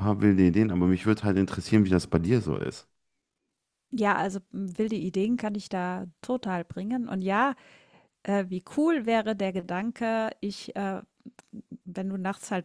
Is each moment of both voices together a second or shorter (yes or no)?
yes